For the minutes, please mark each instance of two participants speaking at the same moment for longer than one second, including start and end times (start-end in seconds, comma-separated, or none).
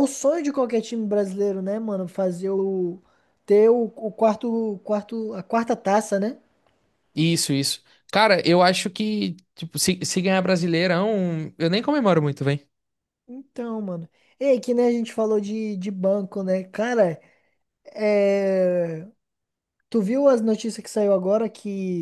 none